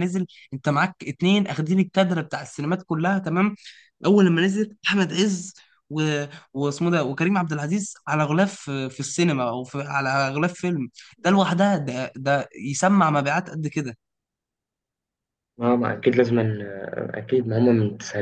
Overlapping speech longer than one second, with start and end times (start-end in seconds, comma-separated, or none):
none